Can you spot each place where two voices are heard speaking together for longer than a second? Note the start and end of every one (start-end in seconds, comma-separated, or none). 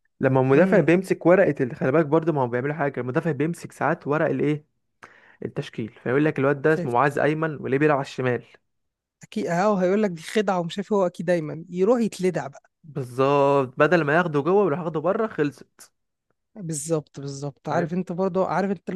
none